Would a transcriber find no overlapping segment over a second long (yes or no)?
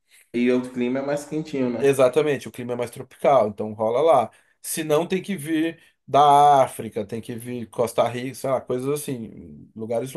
yes